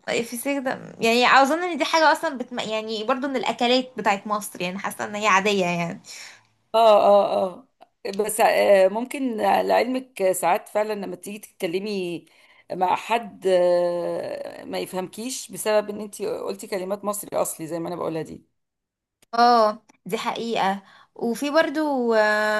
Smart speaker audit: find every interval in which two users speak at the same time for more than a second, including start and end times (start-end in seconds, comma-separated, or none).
none